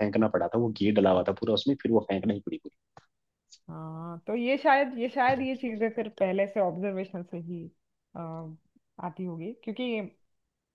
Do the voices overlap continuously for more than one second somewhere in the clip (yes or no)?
no